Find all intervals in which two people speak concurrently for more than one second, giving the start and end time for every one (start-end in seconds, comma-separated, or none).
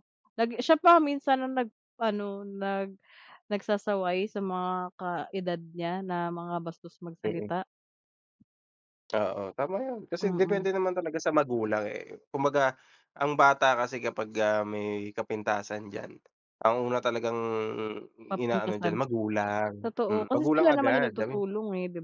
19.8-21.1